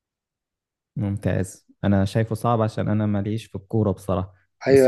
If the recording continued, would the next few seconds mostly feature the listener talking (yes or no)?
yes